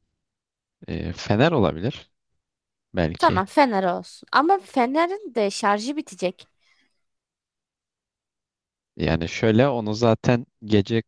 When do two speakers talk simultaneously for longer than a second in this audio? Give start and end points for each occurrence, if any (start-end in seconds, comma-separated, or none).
none